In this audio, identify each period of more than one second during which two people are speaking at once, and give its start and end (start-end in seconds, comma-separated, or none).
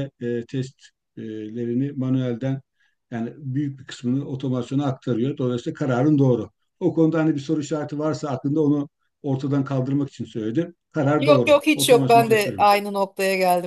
11.2-12.7